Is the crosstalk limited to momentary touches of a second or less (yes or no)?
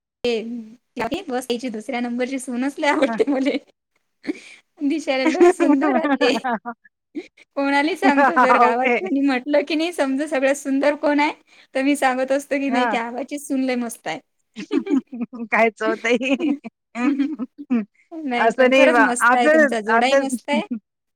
no